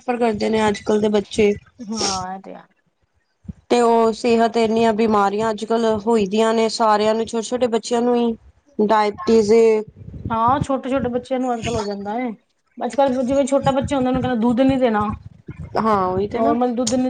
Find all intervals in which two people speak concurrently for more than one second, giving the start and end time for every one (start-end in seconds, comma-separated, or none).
none